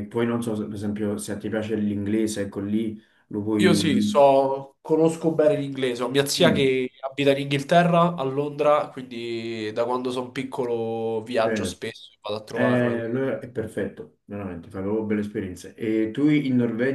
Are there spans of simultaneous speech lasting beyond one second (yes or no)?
no